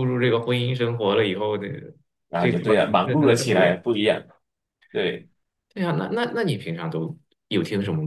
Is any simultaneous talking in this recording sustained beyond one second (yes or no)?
yes